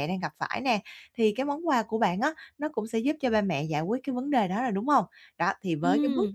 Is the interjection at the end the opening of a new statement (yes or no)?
no